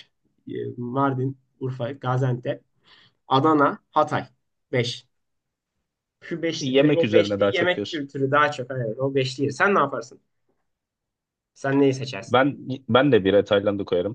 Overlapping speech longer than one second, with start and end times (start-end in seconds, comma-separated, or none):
6.6-8.1